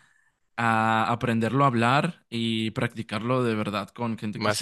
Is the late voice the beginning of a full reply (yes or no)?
no